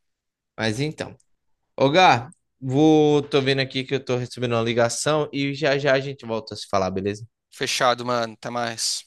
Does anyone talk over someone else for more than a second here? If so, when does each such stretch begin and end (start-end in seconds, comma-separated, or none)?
none